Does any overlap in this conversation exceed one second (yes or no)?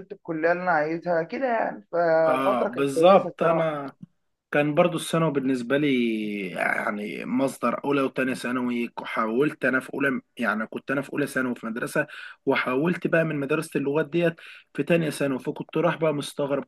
yes